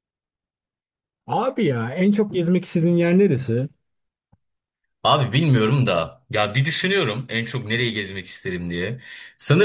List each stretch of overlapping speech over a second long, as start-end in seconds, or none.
none